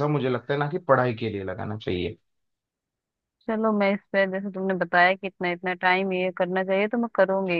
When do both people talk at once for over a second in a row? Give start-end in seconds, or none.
none